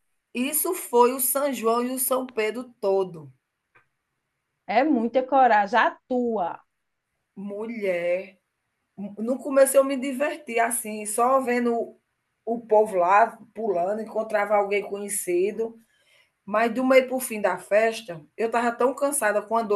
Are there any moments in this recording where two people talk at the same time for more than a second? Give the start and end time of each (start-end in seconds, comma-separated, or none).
none